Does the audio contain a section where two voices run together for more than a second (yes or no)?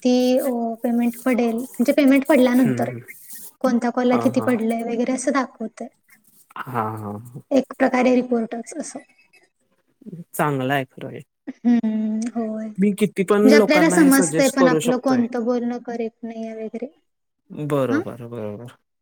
yes